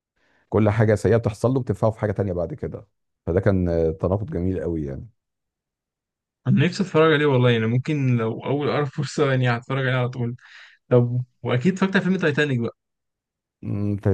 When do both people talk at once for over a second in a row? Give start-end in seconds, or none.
none